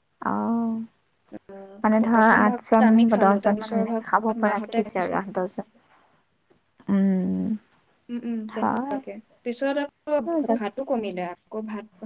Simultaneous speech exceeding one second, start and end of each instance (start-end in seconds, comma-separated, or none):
2.1-5.2